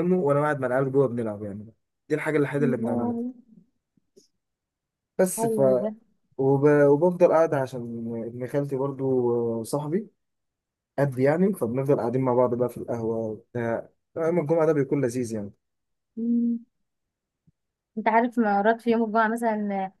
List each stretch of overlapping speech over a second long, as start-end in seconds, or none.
none